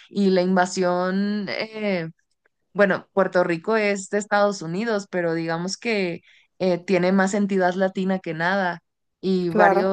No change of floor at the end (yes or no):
yes